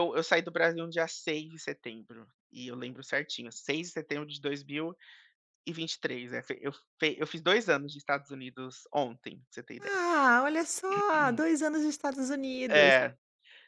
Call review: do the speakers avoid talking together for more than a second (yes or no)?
yes